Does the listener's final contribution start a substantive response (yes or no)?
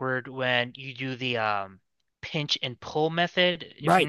yes